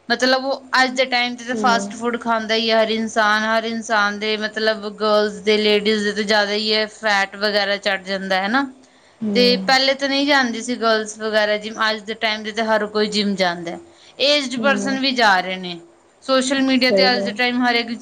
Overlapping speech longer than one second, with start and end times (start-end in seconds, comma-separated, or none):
none